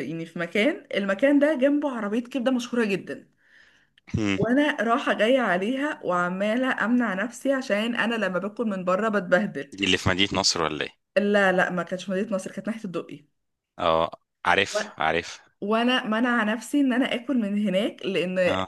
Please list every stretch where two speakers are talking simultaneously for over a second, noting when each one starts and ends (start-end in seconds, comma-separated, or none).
none